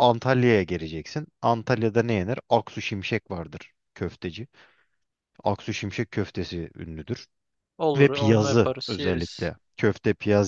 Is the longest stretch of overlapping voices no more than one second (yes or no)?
no